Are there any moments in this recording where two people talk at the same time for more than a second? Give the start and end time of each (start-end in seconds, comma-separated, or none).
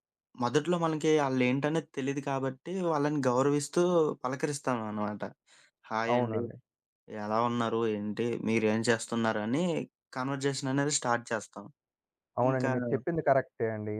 none